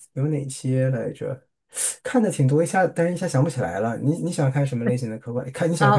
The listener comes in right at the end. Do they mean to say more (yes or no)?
yes